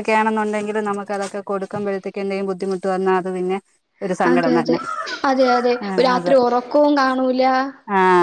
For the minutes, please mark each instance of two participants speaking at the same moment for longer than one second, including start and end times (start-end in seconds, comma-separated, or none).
none